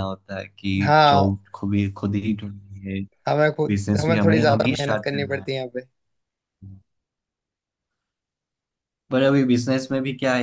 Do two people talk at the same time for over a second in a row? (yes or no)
yes